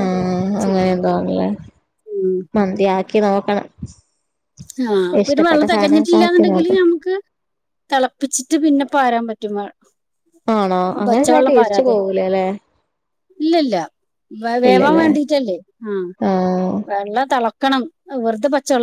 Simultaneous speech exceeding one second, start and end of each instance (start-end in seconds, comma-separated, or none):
5.2-6.8